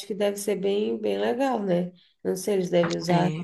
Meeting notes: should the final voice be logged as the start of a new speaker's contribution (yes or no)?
no